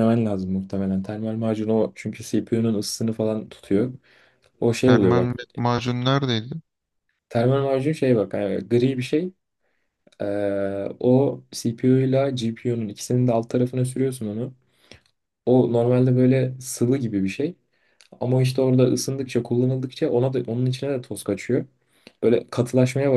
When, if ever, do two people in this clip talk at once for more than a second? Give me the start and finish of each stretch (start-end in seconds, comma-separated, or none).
none